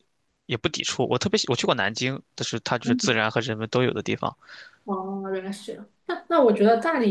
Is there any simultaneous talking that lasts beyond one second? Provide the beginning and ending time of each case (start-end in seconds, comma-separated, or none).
none